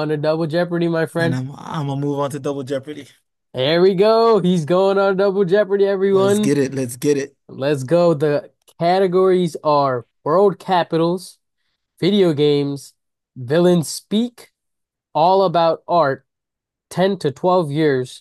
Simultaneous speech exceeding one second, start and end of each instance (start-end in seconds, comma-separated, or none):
none